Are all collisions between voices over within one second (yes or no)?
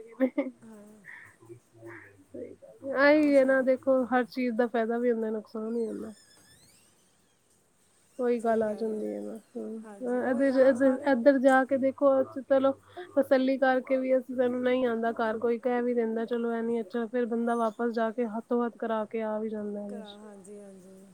yes